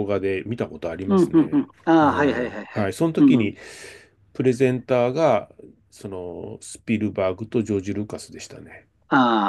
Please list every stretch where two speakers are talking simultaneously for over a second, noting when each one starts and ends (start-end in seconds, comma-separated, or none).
1.1-3.5